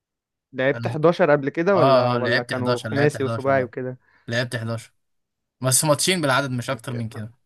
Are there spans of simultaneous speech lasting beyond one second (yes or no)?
yes